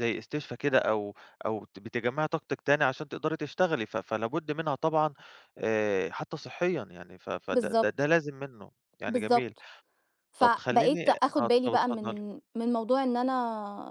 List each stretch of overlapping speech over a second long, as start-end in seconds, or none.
10.4-12.2